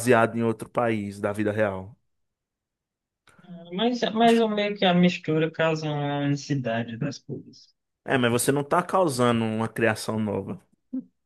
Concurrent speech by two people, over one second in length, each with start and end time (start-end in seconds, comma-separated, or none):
none